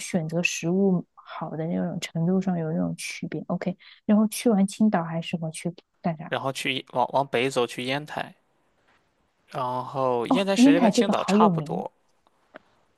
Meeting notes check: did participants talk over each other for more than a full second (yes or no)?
yes